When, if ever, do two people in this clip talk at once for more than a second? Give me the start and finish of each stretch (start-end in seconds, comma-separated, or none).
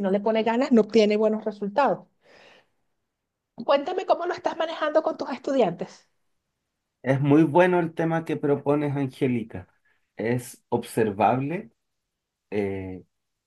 none